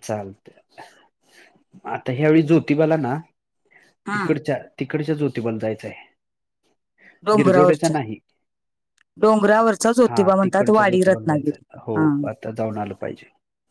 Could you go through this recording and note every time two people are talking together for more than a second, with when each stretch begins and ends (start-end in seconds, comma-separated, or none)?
10.1-12.1